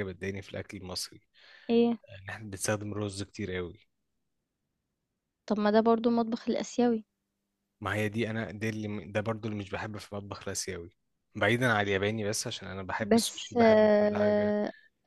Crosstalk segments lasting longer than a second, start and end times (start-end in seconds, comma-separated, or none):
13.0-14.6